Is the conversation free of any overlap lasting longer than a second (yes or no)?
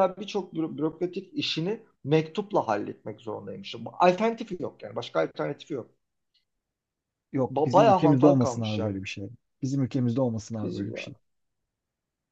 no